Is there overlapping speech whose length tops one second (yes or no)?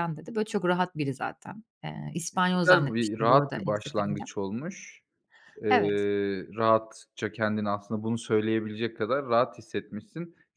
yes